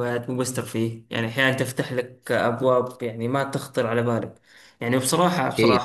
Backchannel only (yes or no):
yes